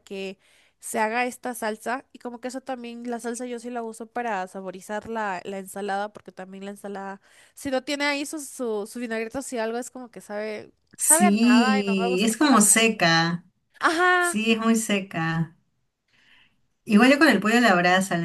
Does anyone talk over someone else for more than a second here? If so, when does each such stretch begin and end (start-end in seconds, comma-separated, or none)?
11.0-12.9